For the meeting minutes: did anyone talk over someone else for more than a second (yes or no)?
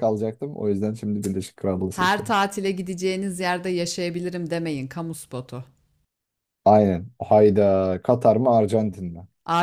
no